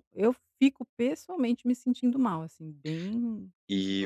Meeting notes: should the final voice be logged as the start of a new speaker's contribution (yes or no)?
yes